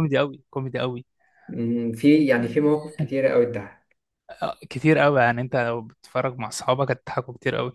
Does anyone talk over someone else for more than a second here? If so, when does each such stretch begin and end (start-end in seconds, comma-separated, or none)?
none